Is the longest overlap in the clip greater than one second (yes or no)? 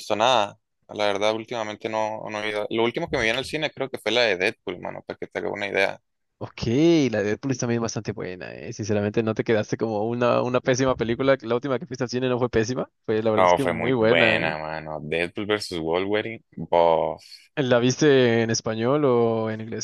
yes